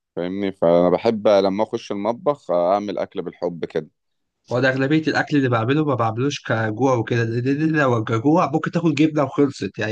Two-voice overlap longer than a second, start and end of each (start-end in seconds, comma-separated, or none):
none